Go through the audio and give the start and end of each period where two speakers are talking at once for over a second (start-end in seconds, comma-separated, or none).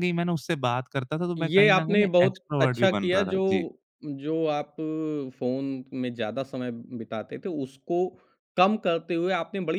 1.4-3.4